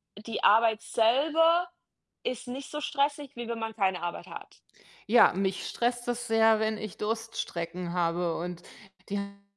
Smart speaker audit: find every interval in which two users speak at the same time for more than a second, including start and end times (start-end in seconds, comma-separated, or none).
none